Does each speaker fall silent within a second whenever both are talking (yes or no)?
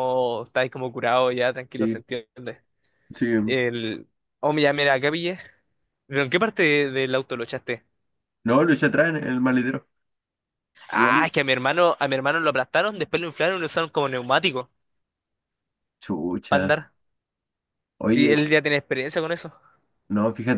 yes